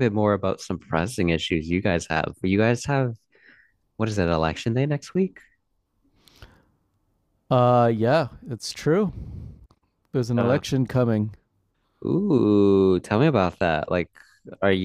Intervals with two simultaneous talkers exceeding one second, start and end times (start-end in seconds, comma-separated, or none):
none